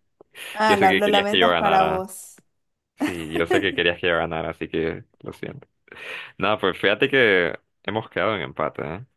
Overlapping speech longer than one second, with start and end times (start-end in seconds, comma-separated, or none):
0.7-2.1